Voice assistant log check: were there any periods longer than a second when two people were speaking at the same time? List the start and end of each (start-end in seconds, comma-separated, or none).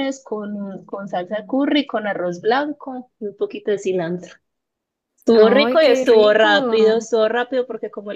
5.3-7.0